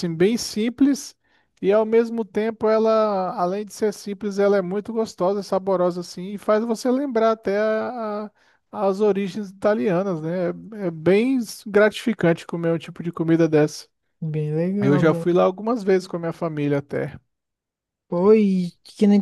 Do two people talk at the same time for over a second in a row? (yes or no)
no